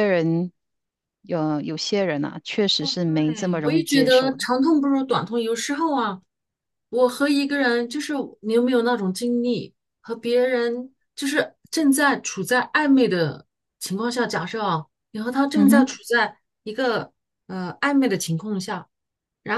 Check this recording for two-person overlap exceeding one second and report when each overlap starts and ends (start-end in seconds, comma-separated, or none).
2.8-4.5